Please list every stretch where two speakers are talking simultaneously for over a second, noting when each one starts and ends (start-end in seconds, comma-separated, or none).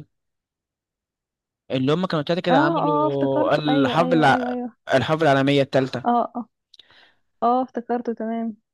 2.5-4.6